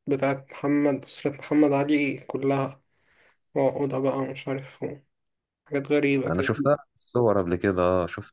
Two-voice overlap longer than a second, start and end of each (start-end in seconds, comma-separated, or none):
none